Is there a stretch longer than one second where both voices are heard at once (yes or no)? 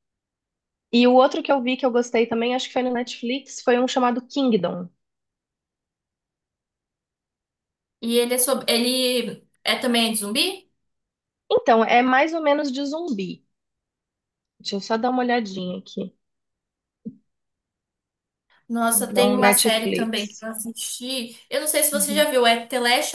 yes